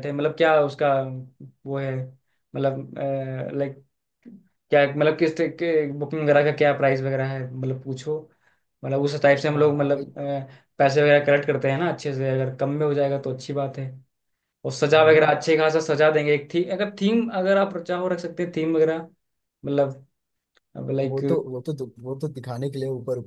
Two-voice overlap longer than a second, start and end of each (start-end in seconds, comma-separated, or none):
none